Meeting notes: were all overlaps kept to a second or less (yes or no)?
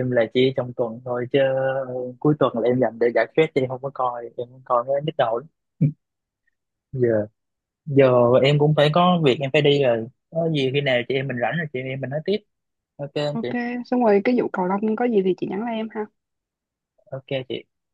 yes